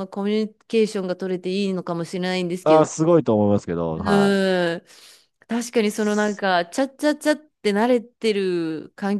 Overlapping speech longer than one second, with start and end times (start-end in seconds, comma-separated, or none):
none